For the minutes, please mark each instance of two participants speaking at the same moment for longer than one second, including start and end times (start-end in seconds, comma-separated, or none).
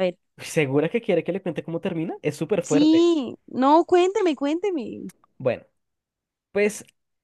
none